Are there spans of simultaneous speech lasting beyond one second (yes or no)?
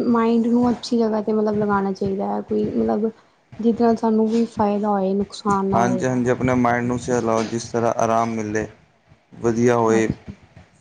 no